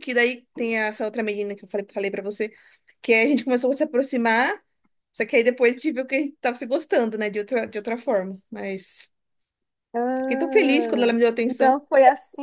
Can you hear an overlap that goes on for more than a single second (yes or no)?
yes